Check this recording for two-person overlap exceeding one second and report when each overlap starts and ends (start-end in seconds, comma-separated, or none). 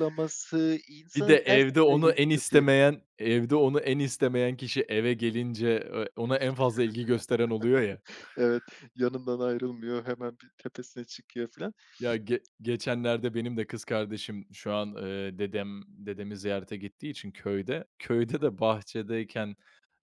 1.1-2.6